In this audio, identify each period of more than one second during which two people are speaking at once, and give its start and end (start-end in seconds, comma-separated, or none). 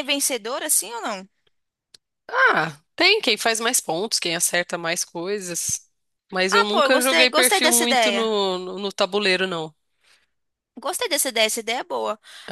6.5-8.3